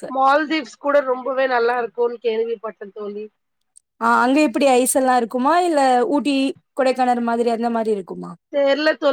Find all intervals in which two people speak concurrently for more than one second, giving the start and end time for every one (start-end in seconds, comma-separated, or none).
none